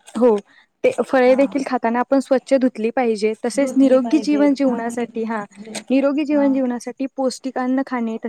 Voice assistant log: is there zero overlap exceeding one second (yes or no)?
no